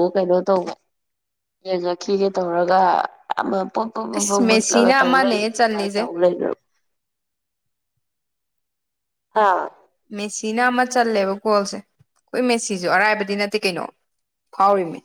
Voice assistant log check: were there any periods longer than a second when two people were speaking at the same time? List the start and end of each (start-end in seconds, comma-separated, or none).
4.2-6.0